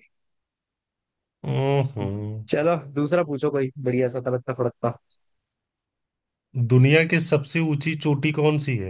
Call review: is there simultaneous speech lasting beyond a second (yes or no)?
no